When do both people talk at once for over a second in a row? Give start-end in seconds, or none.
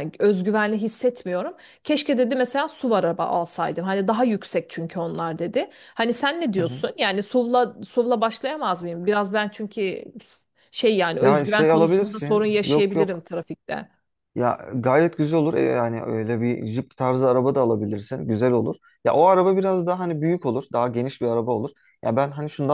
11.2-13.2